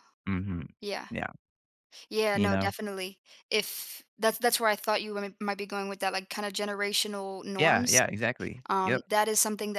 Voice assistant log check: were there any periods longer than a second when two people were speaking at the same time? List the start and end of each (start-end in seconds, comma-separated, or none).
none